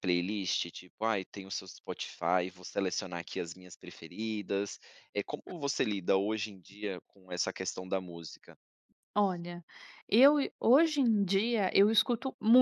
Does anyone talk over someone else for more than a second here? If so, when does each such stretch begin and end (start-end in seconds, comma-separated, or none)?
none